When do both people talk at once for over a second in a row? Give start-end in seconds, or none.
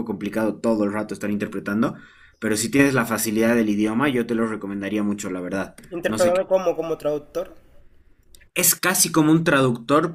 none